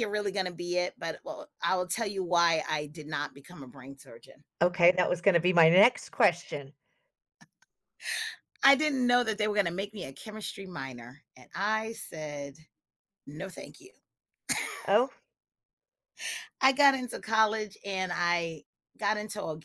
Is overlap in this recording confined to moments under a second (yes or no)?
yes